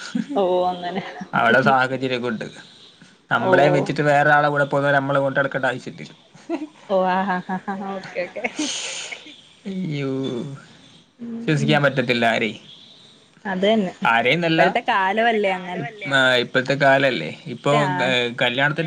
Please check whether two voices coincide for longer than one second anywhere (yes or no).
no